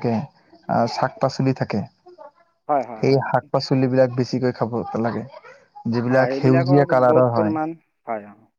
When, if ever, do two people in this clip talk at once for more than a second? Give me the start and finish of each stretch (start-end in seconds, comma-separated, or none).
6.1-7.5